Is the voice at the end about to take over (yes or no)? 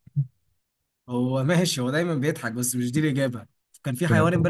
no